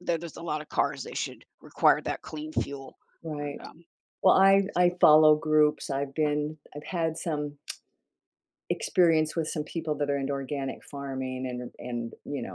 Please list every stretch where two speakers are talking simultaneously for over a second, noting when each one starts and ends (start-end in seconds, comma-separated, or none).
none